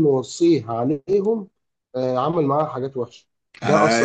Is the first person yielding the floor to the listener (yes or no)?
yes